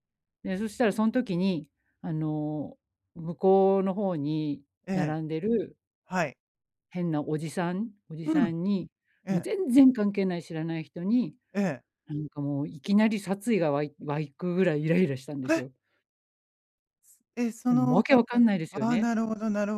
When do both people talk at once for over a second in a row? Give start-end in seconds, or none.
17.7-19.1